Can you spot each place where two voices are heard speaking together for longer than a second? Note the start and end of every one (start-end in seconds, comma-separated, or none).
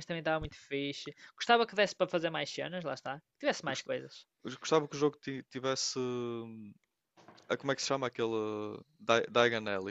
none